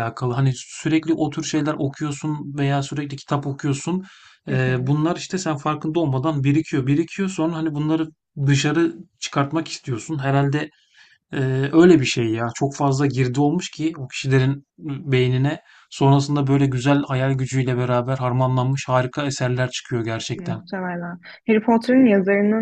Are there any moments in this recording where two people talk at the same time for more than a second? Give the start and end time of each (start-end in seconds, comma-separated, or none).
none